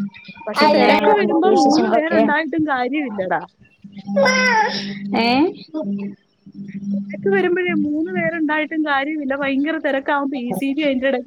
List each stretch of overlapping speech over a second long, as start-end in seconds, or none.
0.6-2.2